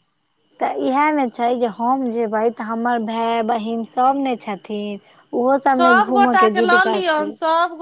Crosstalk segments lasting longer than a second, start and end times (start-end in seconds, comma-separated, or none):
5.7-7.3